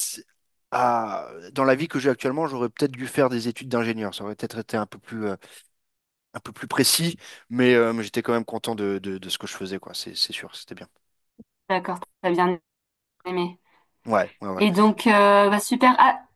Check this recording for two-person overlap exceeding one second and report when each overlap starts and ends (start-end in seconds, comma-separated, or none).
none